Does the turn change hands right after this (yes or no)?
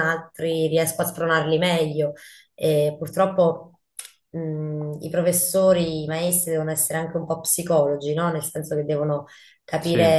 no